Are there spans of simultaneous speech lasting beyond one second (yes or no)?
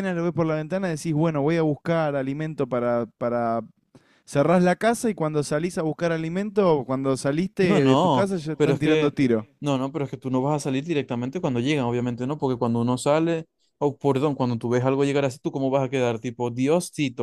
yes